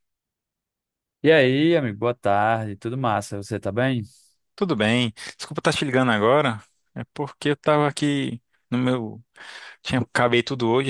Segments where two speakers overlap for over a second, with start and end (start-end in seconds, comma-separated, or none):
none